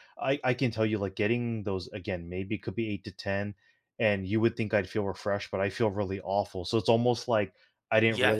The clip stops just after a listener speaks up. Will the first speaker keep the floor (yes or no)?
yes